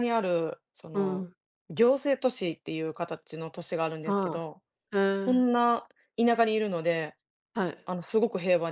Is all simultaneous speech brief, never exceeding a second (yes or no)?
yes